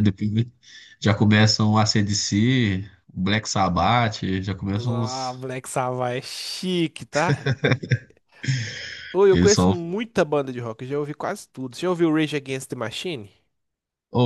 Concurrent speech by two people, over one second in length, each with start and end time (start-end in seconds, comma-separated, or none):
none